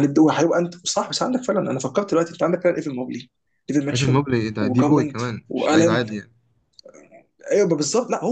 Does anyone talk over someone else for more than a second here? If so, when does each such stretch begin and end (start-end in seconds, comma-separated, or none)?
3.9-6.0